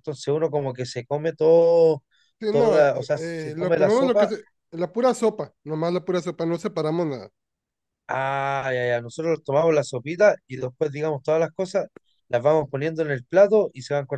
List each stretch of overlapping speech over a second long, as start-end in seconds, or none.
2.5-4.3